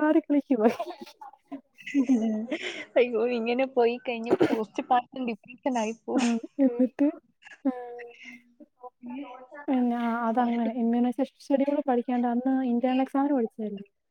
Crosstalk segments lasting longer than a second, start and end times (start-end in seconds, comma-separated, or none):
none